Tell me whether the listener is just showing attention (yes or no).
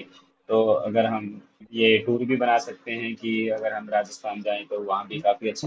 no